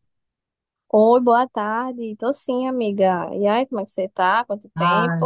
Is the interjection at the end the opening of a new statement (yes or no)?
yes